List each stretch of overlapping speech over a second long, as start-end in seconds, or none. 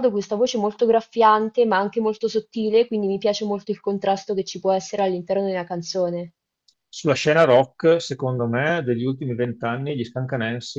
none